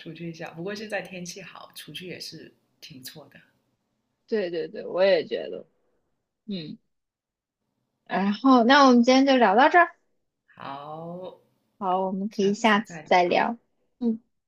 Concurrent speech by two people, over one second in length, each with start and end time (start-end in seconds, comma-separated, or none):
12.3-13.5